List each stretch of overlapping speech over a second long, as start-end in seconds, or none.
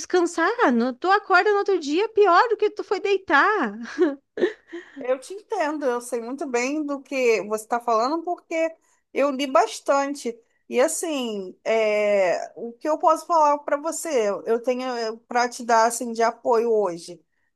none